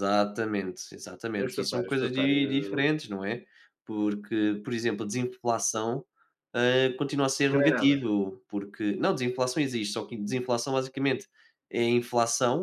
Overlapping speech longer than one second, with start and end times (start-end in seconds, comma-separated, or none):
1.4-2.9